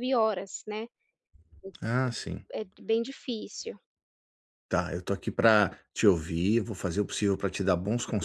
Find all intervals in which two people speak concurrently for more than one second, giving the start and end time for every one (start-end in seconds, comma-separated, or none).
none